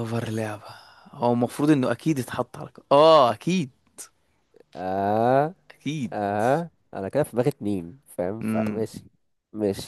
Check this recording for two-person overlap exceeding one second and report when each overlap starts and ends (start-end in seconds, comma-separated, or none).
none